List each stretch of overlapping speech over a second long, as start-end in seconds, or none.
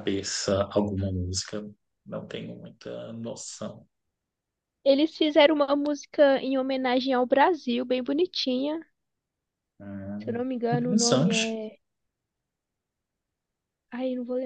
10.2-11.6